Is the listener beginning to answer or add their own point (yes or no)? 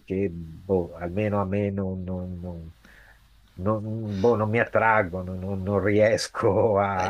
yes